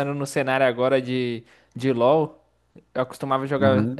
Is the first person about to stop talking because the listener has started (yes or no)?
no